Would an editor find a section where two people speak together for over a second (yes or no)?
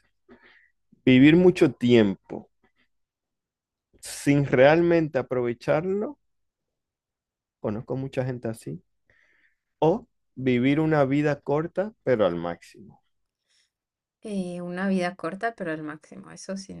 no